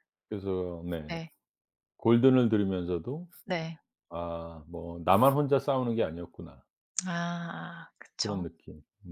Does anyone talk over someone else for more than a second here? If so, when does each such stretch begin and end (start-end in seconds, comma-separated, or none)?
none